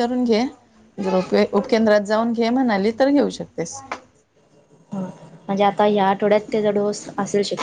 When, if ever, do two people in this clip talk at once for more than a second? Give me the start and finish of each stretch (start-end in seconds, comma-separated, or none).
none